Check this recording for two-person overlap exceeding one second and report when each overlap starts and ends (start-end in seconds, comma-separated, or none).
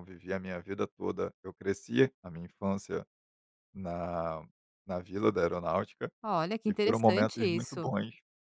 6.7-7.9